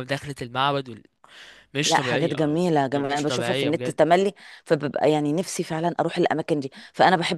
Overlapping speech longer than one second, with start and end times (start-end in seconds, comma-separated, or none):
1.8-4.0